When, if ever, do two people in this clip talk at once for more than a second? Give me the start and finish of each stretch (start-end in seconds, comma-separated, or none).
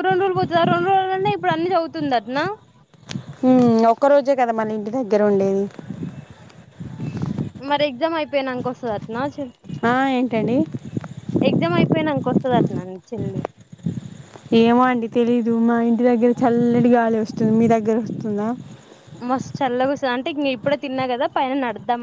none